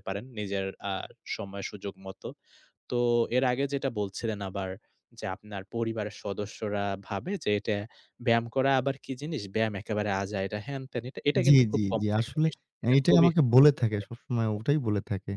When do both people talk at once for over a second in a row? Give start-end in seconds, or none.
11.4-14.6